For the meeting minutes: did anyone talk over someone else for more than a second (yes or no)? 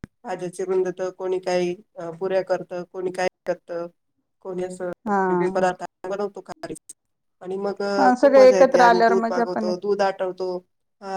yes